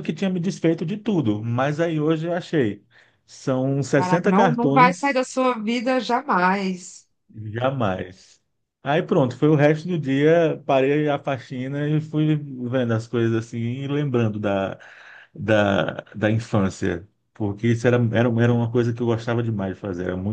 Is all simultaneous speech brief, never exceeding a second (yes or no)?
no